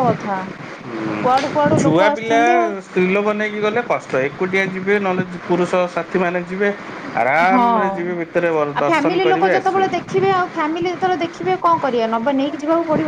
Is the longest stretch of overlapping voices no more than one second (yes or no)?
no